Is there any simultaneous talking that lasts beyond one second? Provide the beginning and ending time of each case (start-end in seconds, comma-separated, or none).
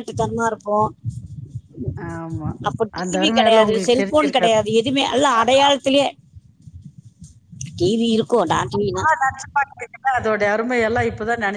3.0-4.6